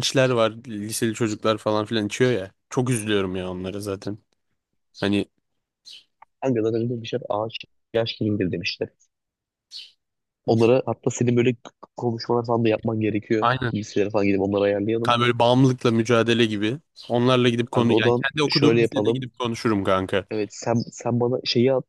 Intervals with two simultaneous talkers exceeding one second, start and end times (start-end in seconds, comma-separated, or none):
17.6-19.3